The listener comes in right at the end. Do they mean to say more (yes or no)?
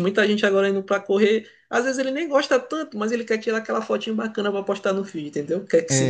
no